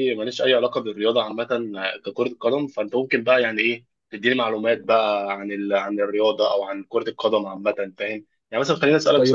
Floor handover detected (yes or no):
no